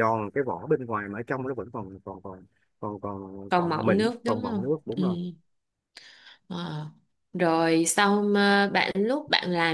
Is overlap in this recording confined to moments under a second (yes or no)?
no